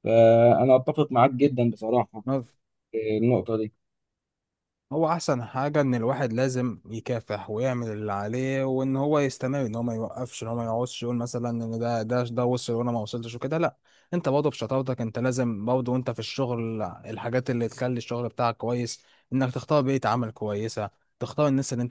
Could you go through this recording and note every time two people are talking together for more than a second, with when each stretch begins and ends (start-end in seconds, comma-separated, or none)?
none